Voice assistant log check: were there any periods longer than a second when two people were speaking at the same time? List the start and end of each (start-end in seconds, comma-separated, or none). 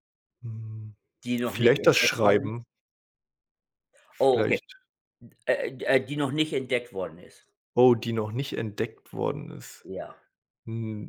1.4-2.6